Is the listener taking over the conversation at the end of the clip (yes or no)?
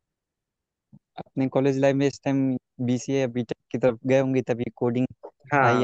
yes